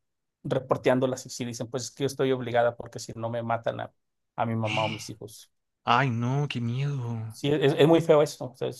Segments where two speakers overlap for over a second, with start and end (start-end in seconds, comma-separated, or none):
none